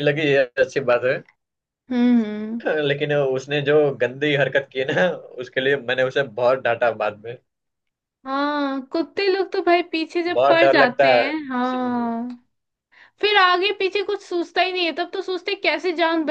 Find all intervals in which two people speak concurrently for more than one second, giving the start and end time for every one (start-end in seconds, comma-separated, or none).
10.3-12.1